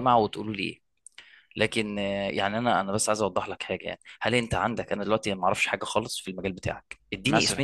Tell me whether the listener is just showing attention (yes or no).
yes